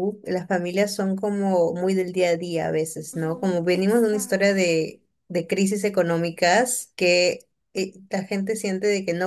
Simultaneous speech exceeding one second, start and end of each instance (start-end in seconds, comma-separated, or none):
3.1-4.7